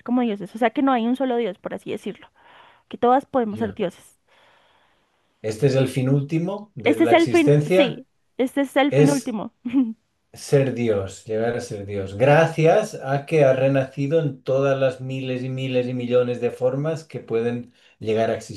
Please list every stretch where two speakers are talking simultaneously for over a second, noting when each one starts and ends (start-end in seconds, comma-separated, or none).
6.8-8.1